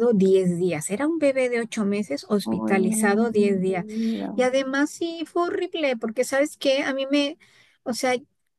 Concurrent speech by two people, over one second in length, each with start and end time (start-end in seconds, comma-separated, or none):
2.5-3.9